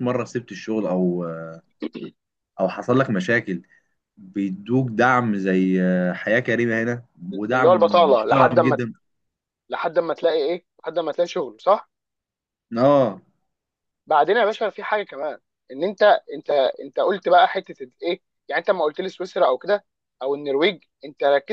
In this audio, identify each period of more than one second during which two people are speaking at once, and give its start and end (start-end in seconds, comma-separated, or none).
7.5-8.8